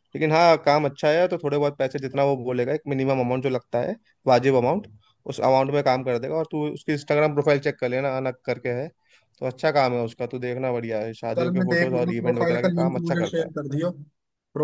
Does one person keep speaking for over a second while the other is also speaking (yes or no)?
yes